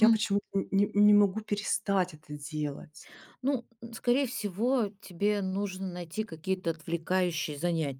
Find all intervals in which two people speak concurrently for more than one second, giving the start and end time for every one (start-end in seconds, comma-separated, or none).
none